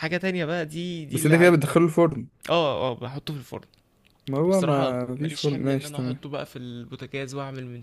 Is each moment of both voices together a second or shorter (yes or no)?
no